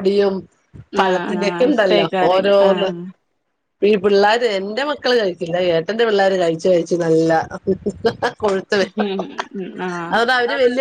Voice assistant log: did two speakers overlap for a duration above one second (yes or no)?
yes